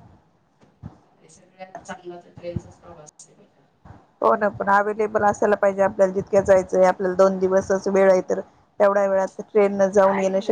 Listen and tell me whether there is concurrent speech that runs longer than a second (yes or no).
no